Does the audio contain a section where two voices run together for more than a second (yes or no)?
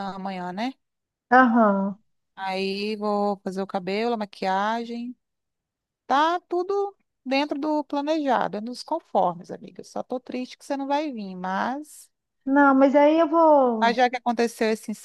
no